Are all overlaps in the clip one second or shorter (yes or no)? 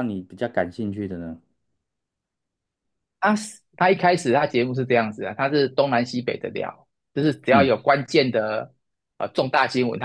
yes